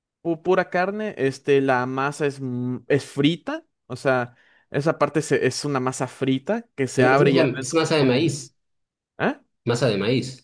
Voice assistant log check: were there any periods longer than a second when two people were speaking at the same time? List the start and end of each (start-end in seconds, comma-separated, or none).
7.0-8.3